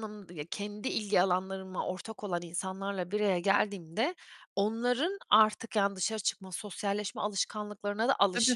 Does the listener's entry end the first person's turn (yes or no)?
no